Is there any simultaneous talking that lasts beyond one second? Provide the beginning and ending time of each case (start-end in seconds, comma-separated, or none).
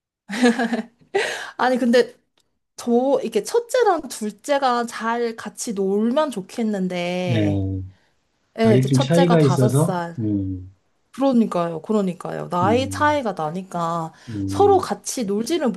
8.6-10.2